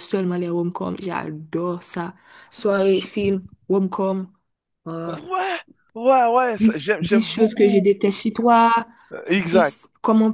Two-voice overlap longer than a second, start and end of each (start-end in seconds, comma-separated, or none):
6.6-7.9